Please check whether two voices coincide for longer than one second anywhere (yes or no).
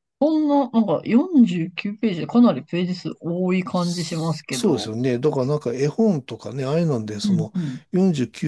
yes